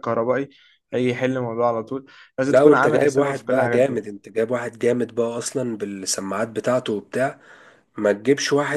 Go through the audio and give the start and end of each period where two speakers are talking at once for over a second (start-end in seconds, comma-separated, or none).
2.5-4.0